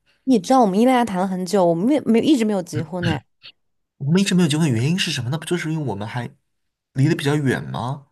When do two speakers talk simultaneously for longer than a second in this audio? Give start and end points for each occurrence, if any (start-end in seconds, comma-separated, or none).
none